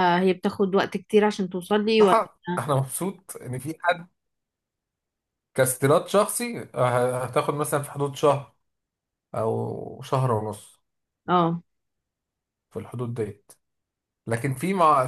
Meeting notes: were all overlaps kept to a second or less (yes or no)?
yes